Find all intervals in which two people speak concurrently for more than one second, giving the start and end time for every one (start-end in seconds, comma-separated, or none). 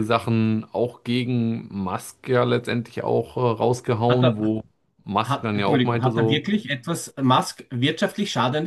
5.2-6.5